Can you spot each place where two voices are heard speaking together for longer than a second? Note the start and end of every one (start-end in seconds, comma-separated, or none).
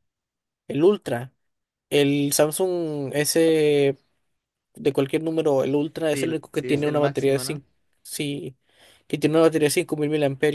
6.1-7.6